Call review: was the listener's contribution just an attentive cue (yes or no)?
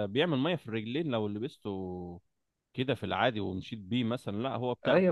no